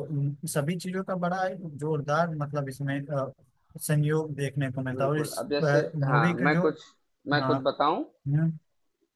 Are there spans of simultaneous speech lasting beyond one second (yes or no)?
yes